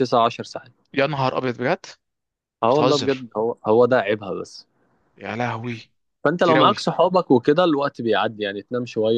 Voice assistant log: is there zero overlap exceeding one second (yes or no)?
yes